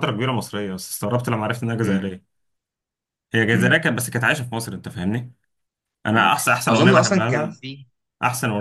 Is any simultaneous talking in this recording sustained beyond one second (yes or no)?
yes